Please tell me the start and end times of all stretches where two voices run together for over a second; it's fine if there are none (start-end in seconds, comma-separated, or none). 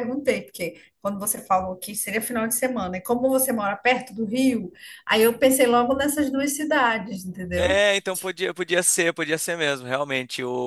none